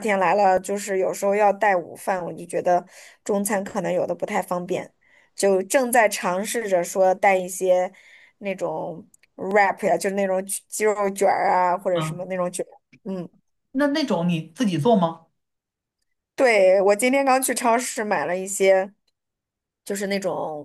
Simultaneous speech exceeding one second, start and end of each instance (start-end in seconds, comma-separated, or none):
none